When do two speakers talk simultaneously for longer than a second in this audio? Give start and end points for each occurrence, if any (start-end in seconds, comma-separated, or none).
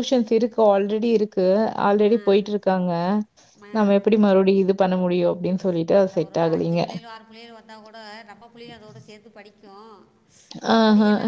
none